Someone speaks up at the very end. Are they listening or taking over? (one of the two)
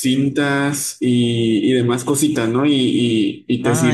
listening